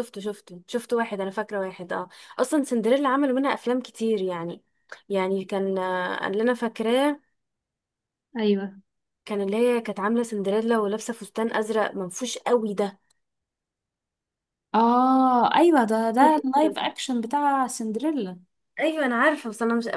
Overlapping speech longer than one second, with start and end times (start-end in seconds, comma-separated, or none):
none